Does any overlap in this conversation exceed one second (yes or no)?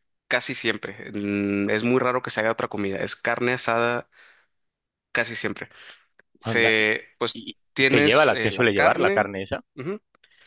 yes